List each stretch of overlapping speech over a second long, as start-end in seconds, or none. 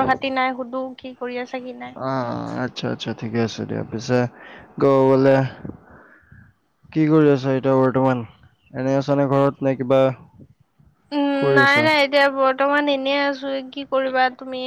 none